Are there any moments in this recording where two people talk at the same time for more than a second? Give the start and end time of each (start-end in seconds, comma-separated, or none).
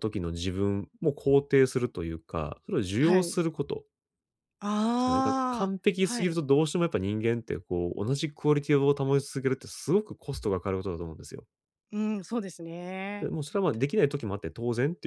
5.0-6.4